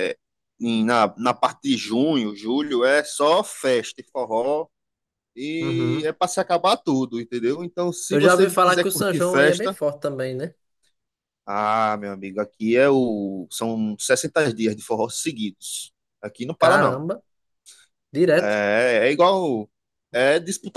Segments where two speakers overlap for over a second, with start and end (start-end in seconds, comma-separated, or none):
8.1-9.8